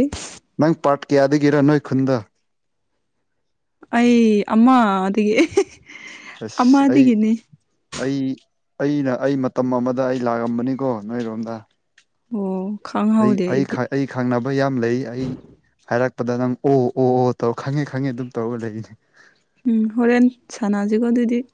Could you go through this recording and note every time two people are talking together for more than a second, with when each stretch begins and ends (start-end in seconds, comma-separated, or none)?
none